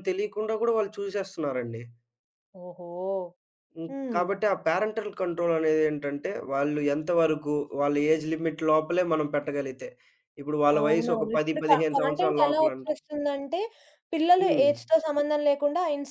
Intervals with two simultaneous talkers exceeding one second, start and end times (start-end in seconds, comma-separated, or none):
10.8-12.9